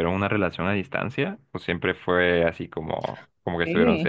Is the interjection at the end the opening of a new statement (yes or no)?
yes